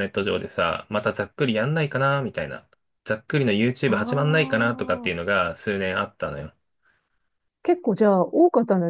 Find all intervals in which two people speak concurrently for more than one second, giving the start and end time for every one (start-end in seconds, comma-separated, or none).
3.9-5.3